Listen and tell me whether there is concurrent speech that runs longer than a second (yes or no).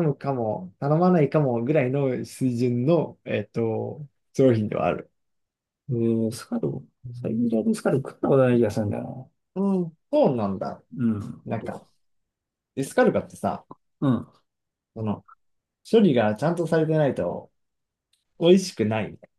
no